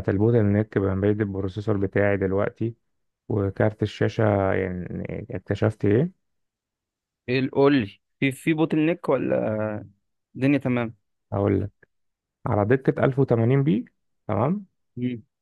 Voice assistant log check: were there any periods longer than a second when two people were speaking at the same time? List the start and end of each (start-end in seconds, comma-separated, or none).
none